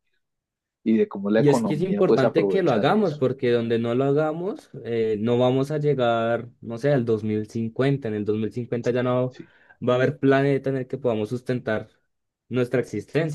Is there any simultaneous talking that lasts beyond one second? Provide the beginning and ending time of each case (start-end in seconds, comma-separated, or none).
1.4-3.2